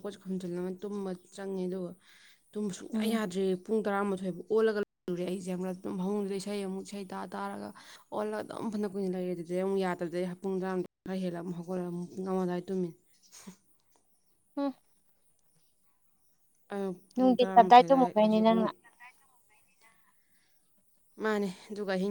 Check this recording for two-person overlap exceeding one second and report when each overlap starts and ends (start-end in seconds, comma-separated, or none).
17.1-18.7